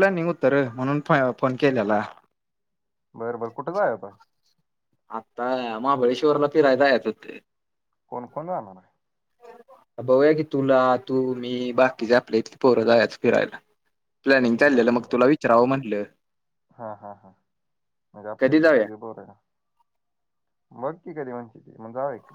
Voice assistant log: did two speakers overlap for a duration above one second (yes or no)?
no